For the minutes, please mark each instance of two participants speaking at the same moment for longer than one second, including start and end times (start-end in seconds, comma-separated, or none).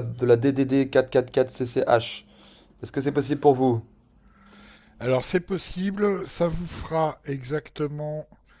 none